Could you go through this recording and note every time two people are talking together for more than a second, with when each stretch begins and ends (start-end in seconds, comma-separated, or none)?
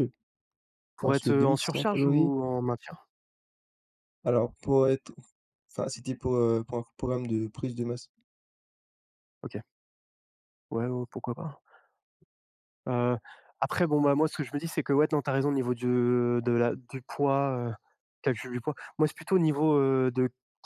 1.0-2.3